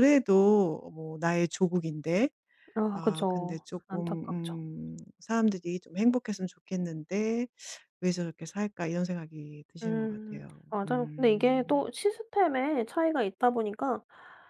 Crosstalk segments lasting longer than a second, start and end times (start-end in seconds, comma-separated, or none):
2.9-4.2, 9.8-11.9